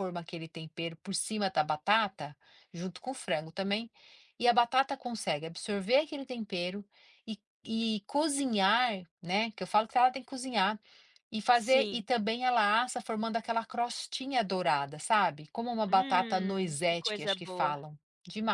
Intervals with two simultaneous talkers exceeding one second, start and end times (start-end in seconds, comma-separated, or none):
15.9-17.8